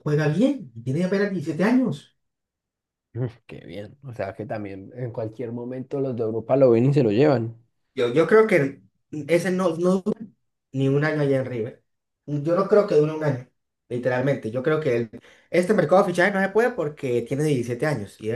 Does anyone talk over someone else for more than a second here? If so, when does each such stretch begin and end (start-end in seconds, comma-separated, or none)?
none